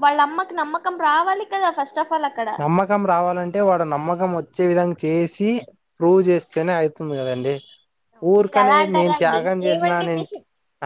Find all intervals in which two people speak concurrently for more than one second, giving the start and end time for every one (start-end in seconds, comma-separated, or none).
8.4-10.2